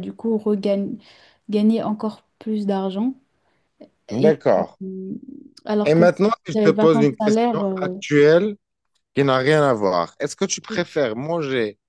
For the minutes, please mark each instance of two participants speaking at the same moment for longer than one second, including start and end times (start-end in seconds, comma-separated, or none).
5.8-7.9